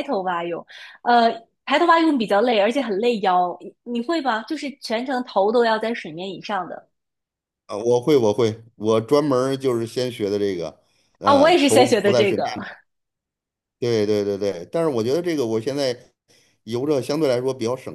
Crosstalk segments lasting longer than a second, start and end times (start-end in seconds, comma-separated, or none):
11.2-12.6